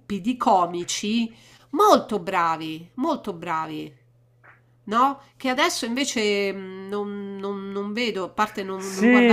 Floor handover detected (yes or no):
yes